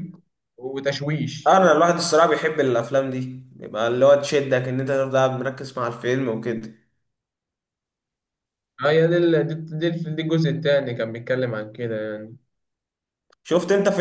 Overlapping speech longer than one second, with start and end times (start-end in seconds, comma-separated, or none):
none